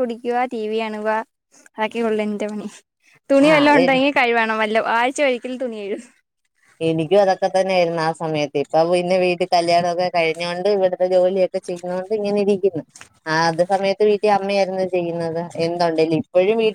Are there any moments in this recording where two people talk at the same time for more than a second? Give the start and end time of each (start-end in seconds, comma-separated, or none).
none